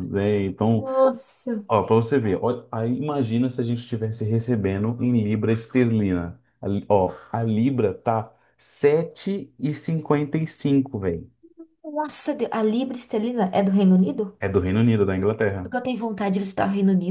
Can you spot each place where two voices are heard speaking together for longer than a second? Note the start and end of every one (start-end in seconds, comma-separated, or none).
none